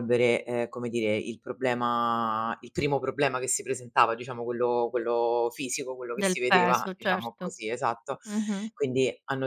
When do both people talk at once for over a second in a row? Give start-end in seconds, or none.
6.2-7.6